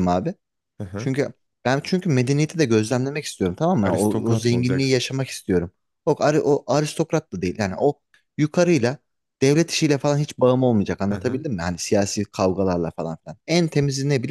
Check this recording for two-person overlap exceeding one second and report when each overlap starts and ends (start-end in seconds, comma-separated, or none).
3.8-5.0